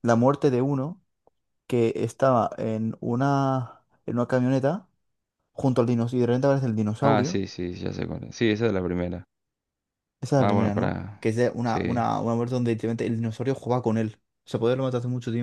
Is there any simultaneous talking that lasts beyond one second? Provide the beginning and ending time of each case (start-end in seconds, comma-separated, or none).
10.4-12.1